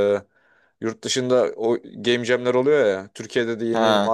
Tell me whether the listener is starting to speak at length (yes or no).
no